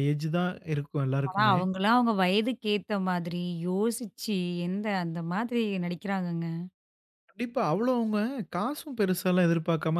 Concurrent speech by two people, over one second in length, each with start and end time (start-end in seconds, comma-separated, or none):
none